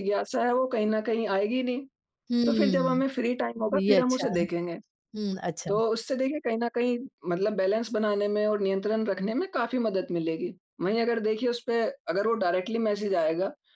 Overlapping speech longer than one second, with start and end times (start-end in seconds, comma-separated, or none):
none